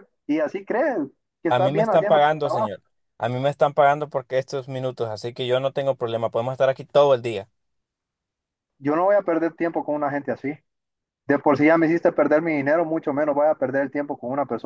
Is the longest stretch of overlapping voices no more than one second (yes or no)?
no